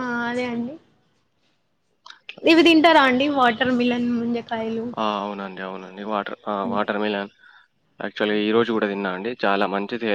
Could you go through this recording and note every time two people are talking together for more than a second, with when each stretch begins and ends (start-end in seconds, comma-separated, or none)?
none